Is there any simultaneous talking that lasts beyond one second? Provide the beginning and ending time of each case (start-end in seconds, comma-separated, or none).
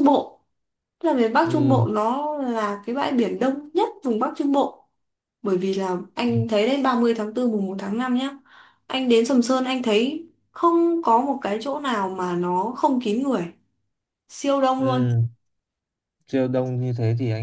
none